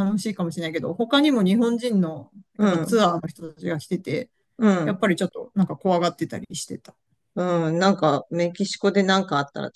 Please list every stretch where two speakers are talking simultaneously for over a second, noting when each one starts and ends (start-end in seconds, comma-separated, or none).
none